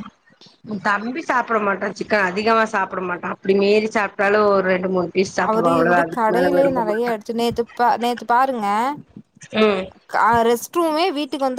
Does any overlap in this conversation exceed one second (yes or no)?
yes